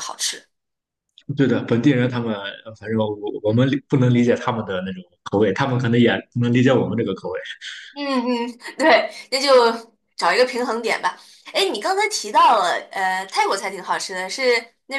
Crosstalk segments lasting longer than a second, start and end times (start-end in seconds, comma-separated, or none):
none